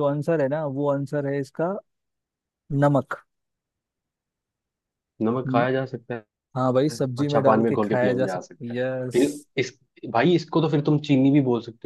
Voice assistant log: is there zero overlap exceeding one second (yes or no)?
no